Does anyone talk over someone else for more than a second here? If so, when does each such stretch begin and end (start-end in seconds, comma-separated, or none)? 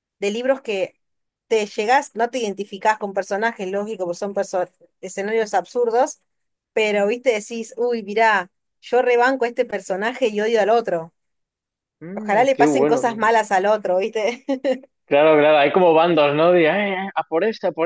12.1-13.3